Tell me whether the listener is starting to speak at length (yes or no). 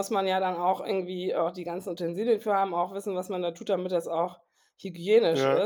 no